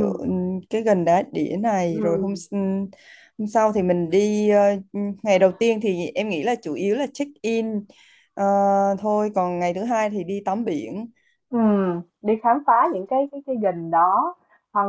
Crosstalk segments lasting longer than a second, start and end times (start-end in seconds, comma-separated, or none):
none